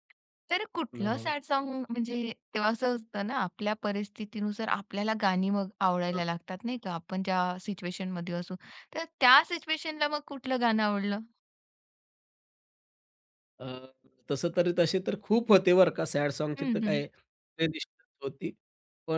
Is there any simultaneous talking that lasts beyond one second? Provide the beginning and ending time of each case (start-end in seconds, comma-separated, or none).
none